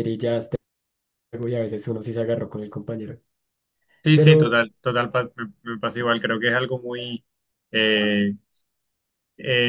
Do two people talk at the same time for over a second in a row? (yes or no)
no